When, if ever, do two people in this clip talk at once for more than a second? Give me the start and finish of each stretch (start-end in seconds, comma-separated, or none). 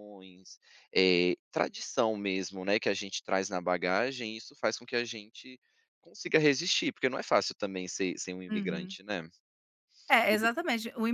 none